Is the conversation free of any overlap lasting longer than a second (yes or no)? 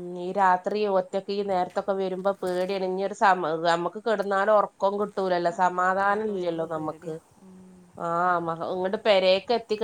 no